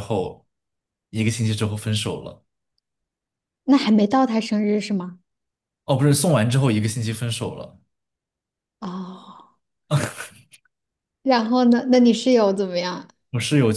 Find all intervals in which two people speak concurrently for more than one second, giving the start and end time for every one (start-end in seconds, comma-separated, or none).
none